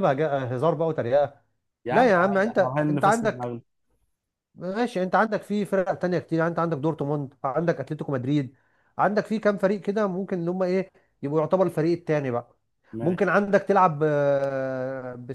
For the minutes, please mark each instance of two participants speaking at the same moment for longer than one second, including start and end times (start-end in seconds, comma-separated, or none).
1.9-3.5